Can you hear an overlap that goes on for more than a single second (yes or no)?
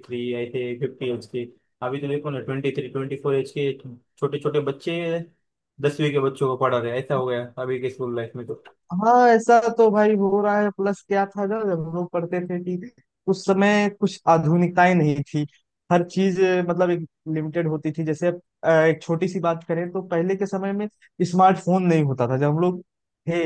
no